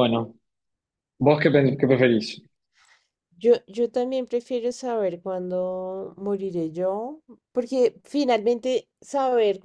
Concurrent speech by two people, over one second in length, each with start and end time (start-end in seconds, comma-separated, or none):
none